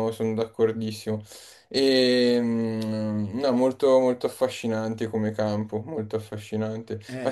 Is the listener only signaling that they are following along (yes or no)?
yes